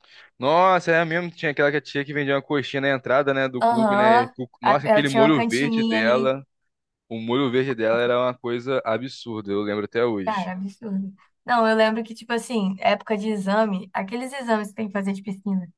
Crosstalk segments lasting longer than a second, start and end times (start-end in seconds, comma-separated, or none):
3.6-6.3